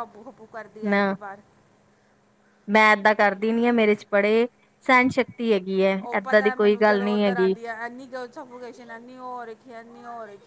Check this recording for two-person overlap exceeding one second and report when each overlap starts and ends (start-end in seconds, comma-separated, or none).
6.1-7.5